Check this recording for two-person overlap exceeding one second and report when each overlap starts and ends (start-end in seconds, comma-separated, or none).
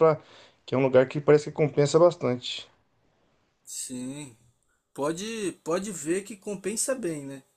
none